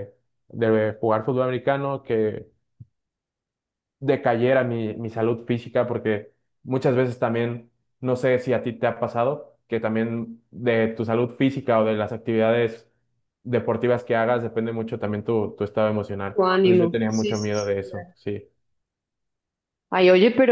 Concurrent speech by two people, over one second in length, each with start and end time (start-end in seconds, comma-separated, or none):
16.3-18.1